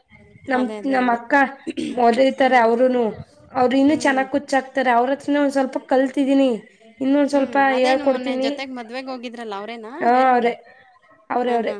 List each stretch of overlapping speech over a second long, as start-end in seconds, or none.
none